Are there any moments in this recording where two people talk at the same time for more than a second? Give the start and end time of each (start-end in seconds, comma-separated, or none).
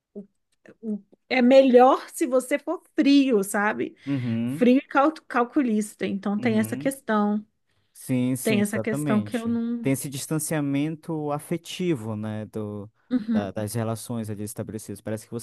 8.4-9.9